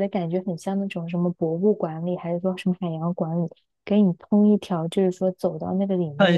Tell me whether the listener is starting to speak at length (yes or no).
yes